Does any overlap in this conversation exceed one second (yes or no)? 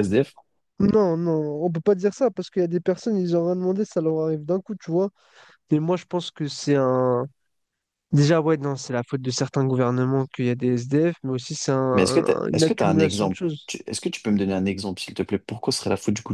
yes